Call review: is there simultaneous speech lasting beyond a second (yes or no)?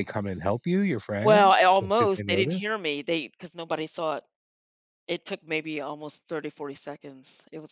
yes